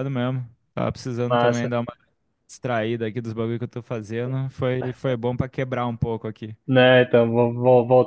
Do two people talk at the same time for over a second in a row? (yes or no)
no